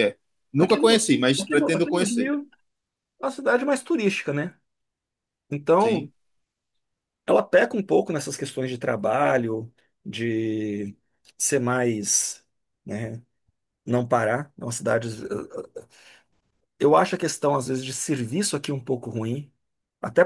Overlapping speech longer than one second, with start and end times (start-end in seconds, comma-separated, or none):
0.6-2.3